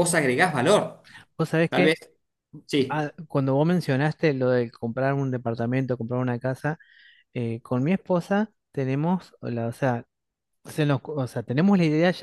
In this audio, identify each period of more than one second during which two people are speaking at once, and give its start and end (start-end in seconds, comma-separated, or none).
none